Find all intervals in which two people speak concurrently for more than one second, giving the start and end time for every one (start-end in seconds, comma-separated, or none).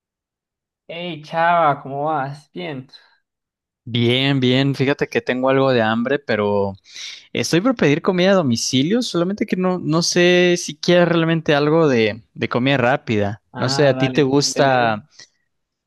13.6-14.9